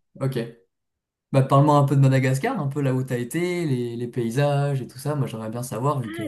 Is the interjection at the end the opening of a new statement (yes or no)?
yes